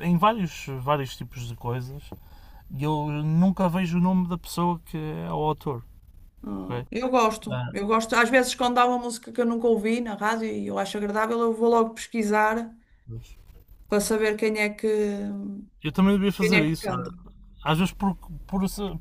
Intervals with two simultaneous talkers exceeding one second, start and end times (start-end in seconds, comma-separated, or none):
none